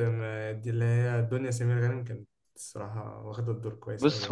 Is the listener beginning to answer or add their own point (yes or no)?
yes